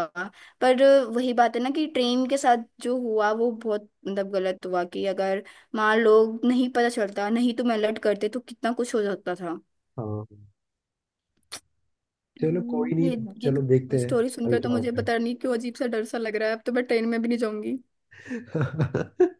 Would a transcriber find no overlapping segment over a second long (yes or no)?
no